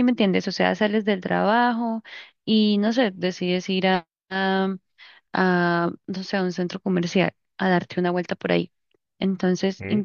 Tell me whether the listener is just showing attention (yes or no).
yes